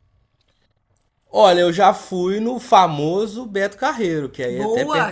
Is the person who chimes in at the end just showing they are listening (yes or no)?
no